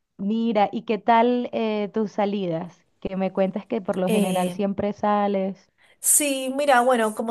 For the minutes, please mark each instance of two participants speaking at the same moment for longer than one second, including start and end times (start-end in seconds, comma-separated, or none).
none